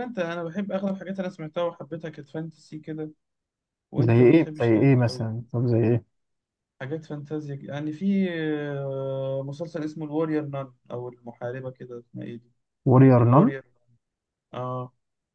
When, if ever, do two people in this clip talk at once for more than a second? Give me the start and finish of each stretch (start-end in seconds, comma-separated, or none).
4.0-5.3